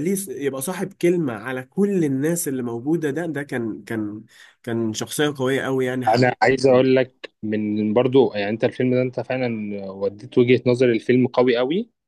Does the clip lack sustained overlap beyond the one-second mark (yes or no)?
yes